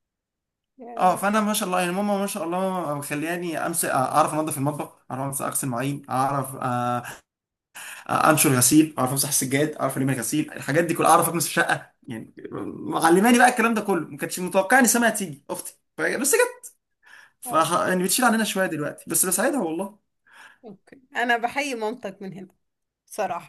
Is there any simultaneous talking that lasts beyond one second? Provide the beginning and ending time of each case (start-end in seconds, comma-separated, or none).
none